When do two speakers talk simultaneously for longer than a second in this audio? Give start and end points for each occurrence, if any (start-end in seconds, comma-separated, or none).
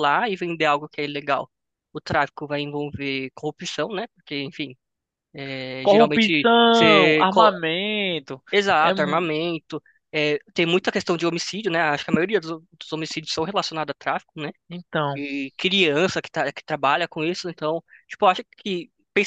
5.8-7.5